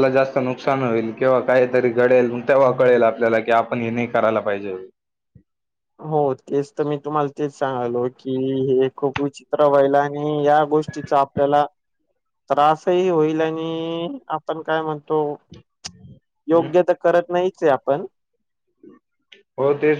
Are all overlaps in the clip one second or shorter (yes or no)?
yes